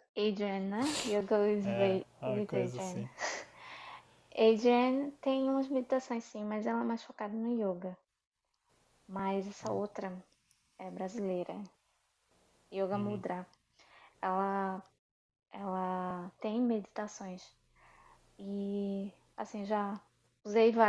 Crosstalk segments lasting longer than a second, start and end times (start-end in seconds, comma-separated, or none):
1.6-3.1